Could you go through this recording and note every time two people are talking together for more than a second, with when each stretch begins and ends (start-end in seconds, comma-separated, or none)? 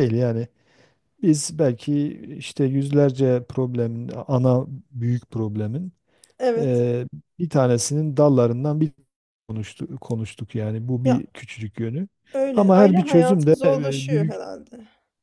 12.5-14.3